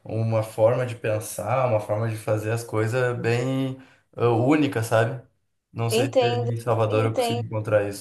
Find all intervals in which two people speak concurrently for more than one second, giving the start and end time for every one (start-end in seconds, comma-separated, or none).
5.9-7.4